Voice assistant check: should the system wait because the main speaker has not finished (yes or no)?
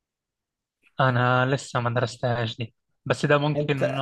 yes